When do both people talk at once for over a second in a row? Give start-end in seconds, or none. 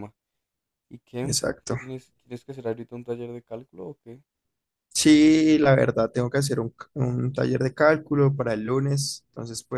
none